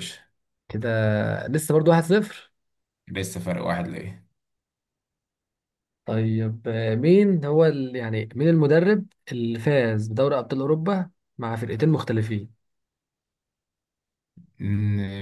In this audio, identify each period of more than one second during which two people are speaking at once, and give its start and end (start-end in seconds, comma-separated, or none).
none